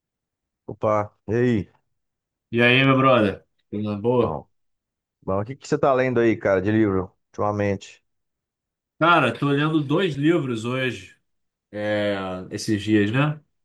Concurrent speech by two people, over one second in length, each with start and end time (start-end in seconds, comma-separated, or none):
none